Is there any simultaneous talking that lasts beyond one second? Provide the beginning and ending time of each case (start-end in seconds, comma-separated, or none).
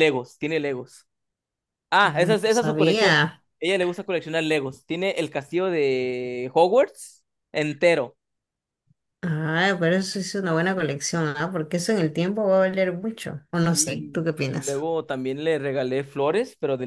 2.0-3.4, 13.6-14.9